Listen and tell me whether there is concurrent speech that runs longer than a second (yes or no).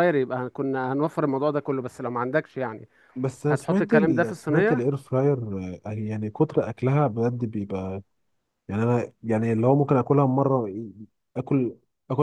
yes